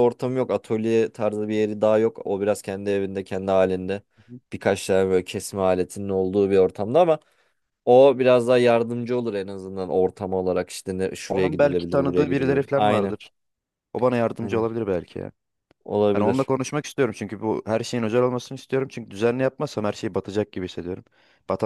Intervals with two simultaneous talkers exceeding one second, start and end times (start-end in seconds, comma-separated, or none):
11.3-13.2